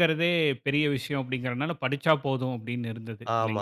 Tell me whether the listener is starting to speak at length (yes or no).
yes